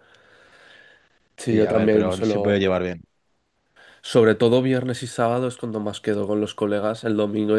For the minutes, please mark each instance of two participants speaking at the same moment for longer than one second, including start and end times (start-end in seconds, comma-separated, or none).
1.5-2.7